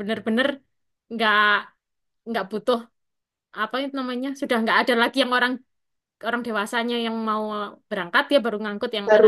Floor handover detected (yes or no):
yes